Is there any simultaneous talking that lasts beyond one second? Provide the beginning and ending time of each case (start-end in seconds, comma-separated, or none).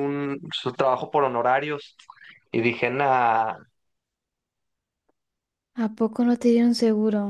none